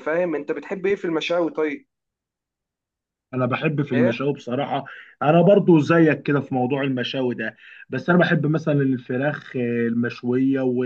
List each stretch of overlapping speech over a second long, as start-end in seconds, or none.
none